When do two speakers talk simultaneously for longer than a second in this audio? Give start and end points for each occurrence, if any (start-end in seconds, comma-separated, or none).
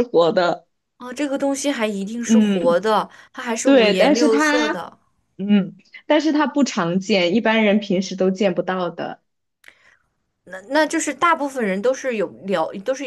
3.6-4.8